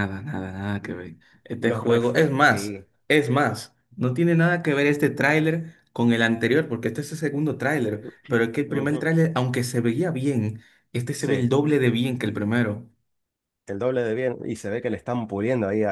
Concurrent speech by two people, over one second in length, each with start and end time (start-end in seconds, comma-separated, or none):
1.6-2.9